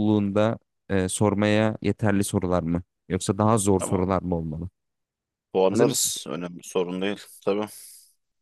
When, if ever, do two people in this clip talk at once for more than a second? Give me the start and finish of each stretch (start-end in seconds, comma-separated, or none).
none